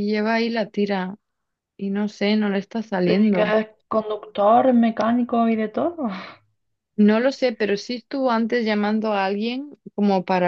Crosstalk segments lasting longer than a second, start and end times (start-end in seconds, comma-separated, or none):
none